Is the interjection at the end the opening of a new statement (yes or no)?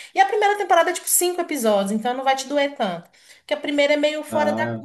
no